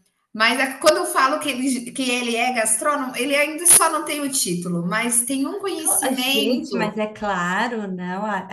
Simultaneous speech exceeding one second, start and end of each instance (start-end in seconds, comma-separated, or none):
5.8-7.0